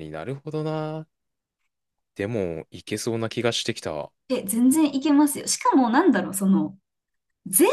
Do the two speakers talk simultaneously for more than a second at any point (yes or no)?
no